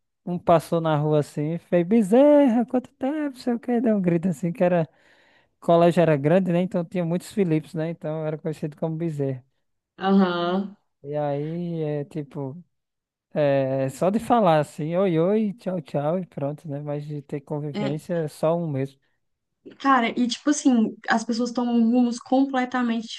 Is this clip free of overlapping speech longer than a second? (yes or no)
yes